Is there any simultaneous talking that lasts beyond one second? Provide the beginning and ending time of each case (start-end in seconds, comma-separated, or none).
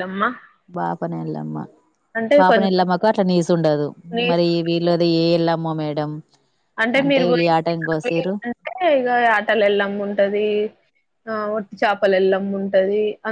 none